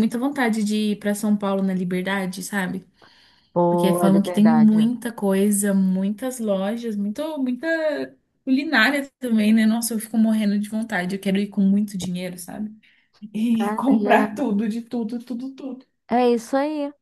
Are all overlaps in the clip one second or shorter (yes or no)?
no